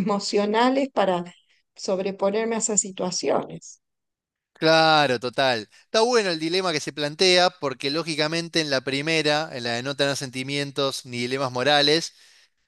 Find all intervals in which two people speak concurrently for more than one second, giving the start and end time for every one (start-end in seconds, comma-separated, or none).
none